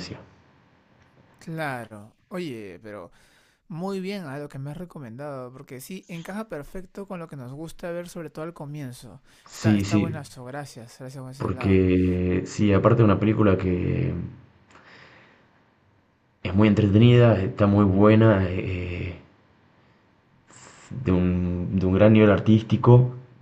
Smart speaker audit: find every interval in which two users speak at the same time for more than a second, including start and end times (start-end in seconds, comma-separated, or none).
none